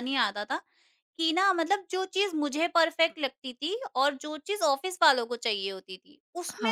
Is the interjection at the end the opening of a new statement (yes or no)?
no